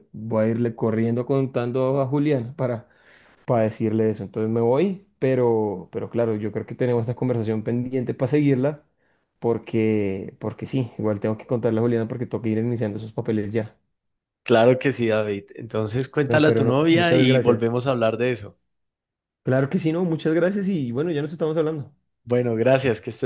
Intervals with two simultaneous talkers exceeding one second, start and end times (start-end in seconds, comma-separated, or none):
16.3-17.6